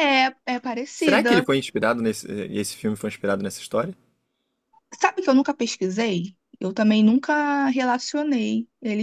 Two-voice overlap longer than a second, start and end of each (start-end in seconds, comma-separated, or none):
none